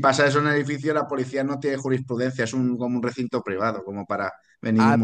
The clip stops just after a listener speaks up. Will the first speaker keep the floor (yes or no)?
no